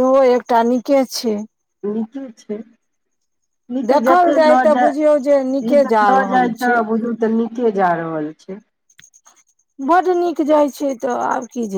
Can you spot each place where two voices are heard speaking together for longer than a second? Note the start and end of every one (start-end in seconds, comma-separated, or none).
3.9-6.8